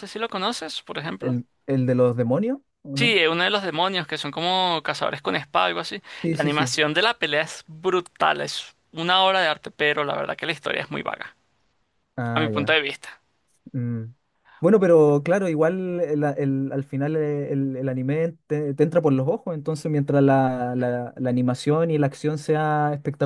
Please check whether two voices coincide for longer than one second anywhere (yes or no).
no